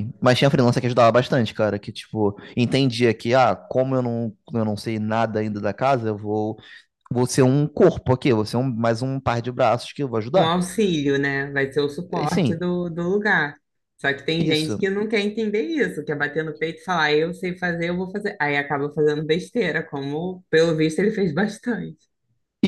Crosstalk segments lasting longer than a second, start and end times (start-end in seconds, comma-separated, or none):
none